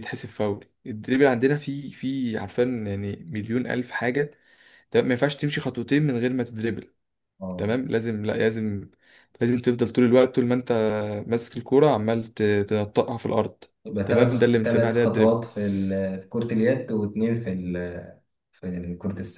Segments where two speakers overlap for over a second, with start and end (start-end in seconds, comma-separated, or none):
14.0-15.4